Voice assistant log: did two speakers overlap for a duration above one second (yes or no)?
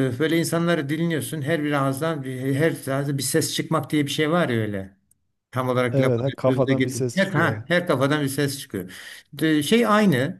yes